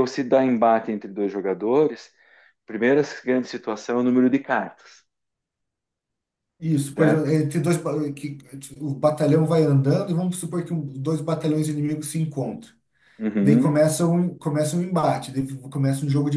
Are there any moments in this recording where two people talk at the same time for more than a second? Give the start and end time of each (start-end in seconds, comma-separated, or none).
none